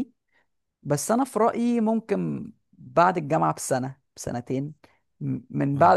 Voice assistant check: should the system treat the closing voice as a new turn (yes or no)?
no